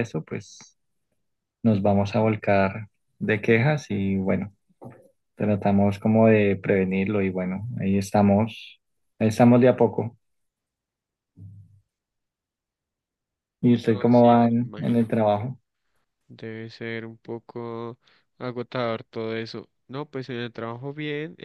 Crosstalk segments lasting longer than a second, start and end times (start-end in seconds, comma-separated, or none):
13.9-15.1